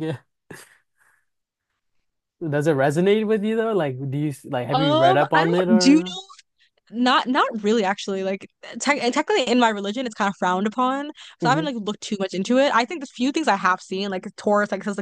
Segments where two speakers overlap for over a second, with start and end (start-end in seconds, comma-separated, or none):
4.7-6.2